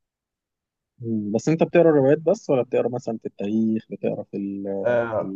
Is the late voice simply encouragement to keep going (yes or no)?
no